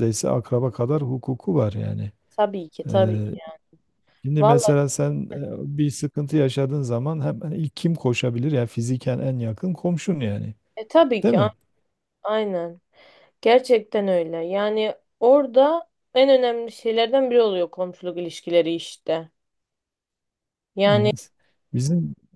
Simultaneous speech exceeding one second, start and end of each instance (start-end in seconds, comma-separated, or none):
none